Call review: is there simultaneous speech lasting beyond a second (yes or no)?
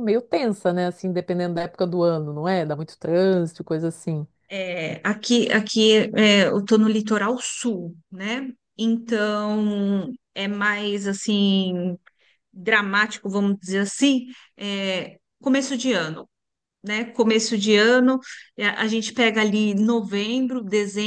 no